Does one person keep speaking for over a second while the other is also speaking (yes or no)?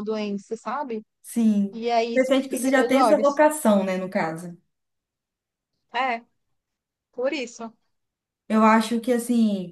yes